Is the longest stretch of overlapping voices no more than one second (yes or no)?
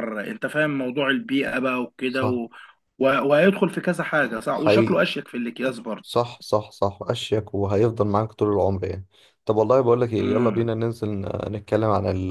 yes